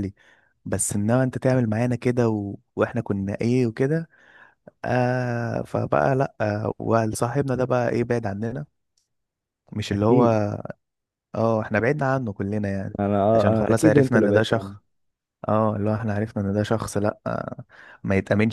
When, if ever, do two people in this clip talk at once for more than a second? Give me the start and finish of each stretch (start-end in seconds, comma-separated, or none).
13.3-14.8